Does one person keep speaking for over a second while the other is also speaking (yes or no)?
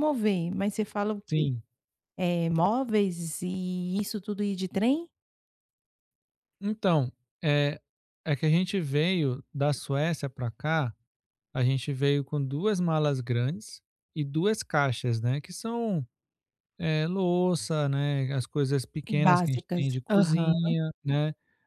yes